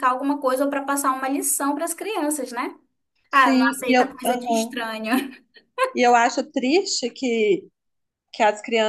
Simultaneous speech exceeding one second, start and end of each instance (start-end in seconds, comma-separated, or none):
3.3-4.8